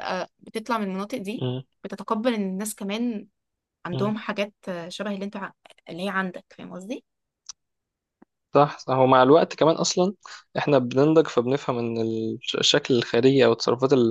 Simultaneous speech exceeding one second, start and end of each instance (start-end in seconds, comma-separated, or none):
none